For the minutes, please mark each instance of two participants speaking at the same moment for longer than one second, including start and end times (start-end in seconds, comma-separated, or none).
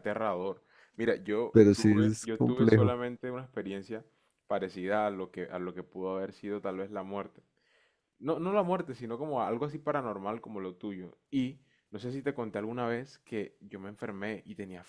1.5-3.0